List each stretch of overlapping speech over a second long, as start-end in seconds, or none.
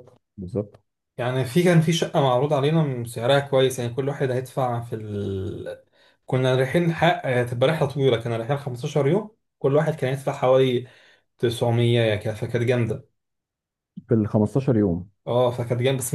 none